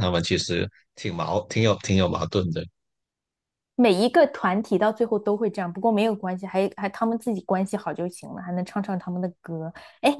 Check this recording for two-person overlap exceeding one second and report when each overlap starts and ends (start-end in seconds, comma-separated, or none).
none